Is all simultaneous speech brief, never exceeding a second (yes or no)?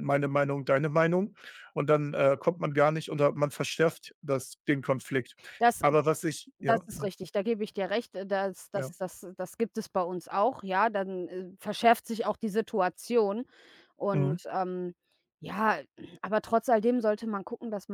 yes